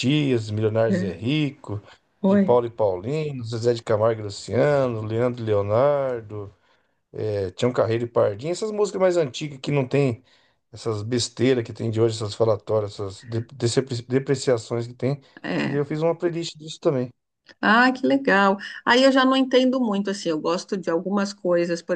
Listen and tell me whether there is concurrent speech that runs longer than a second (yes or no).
no